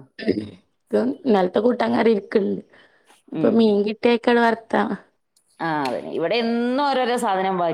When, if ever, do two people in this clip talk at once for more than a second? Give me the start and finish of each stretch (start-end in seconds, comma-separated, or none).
none